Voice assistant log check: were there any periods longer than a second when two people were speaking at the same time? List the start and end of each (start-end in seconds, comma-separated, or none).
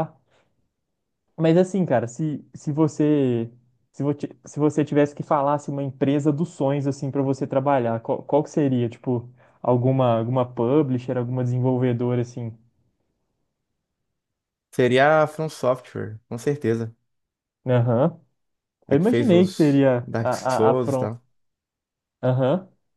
18.9-21.1